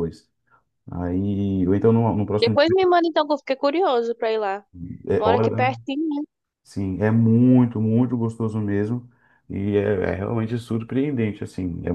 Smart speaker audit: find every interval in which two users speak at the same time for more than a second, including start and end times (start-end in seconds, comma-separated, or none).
none